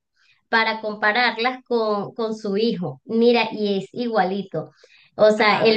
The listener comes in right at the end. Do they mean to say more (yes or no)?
no